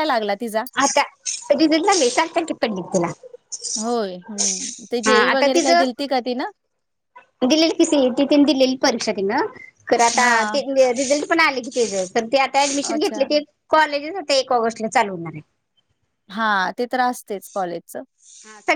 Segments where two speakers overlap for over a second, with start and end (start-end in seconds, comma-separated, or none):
none